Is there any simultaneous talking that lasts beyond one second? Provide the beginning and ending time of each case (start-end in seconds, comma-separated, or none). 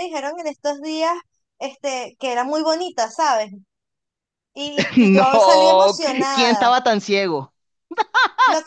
5.0-6.7